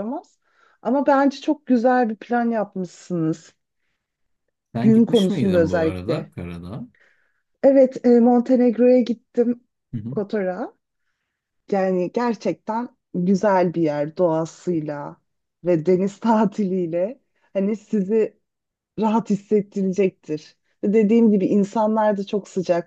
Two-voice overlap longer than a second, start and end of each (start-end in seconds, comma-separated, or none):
4.8-6.3